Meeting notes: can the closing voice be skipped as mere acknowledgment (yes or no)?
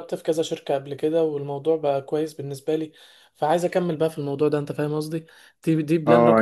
no